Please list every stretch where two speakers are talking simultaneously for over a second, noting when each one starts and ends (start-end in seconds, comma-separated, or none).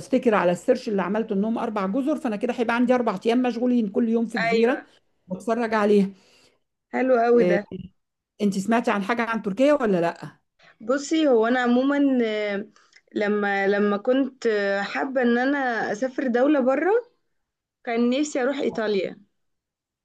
none